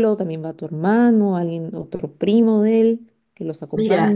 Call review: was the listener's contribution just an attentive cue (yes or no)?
no